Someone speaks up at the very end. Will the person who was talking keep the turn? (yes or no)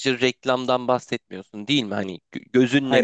yes